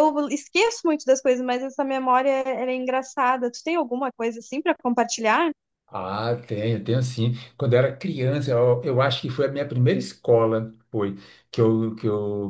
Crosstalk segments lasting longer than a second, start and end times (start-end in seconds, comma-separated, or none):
none